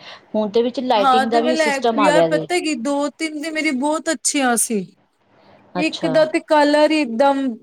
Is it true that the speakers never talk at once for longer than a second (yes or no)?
no